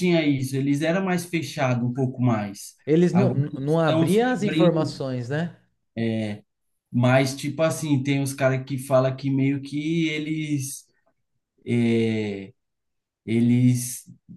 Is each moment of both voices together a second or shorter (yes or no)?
no